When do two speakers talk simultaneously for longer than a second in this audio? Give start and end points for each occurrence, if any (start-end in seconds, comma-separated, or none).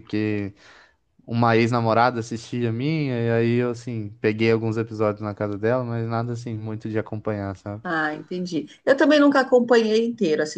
none